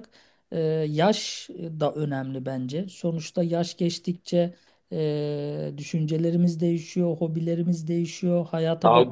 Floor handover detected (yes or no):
yes